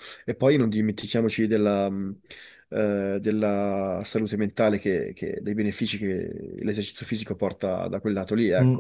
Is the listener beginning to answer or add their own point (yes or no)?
yes